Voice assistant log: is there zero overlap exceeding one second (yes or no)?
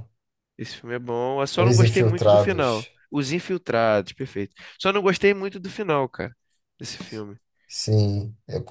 no